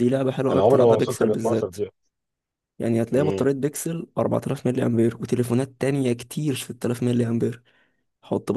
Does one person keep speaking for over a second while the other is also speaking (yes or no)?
yes